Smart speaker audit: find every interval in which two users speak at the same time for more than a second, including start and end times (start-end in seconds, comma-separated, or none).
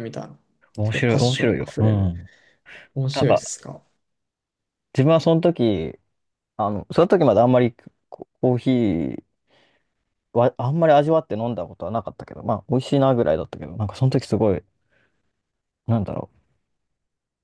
0.8-2.1